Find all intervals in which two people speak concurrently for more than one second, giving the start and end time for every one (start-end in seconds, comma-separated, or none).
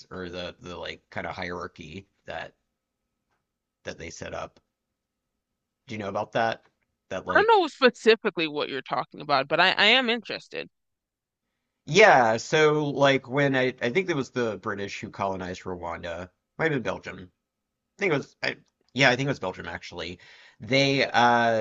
none